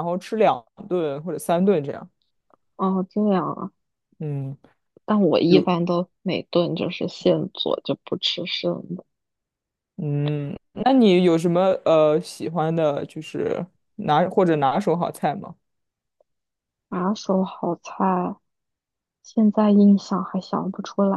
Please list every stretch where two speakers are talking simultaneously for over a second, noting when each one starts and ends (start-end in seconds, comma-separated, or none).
none